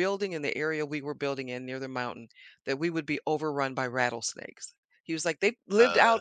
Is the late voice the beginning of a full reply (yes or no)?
no